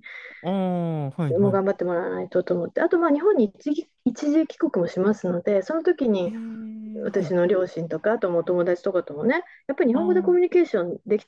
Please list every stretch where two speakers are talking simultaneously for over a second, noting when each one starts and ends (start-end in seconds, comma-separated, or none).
none